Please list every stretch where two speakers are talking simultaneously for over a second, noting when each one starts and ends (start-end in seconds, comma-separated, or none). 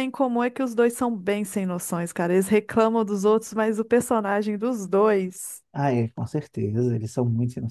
none